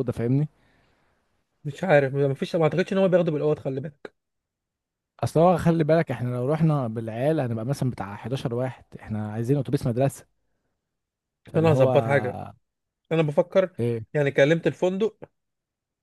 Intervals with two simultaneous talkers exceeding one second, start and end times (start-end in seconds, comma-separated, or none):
none